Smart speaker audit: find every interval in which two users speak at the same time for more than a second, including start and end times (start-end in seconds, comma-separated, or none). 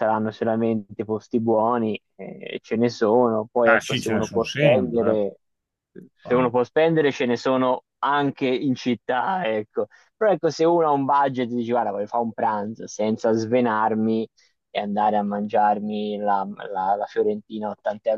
3.6-5.2